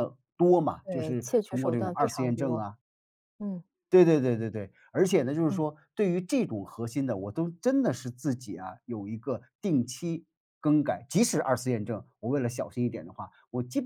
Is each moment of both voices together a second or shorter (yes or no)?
no